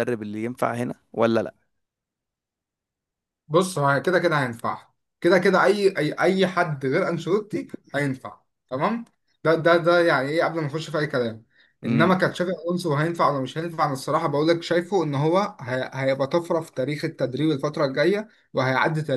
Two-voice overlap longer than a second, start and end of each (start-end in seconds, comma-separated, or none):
none